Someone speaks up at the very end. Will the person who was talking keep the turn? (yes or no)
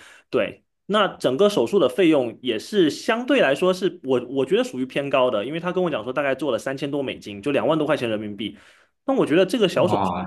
no